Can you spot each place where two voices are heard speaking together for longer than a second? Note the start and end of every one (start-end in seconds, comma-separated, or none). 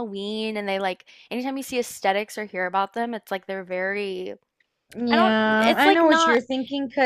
5.1-6.4